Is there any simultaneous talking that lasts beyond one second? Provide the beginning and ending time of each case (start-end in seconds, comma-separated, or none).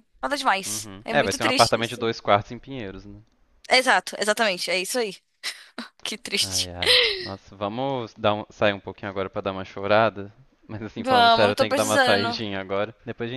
0.7-2.0, 11.0-12.4